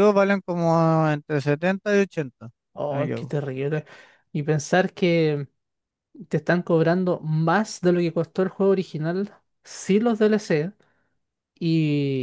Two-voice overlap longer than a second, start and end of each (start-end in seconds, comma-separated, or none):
none